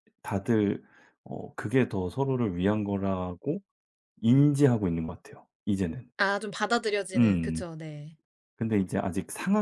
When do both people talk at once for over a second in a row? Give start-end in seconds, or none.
none